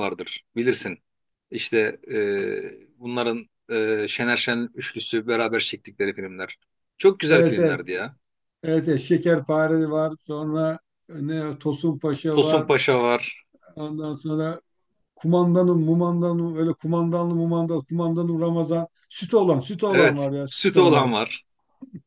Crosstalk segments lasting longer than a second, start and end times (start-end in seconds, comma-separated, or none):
19.9-21.1